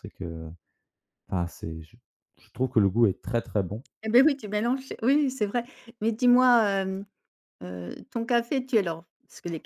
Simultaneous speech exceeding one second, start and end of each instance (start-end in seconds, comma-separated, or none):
none